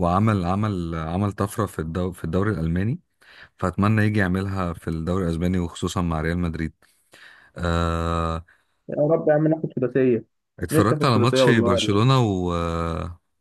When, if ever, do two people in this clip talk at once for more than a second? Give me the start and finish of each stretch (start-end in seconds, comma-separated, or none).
10.7-12.1